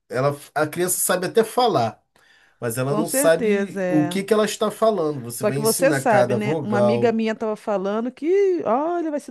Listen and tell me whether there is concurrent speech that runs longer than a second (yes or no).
yes